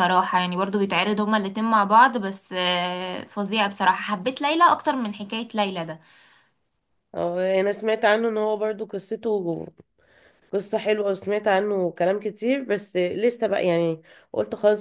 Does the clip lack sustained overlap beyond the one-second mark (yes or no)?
yes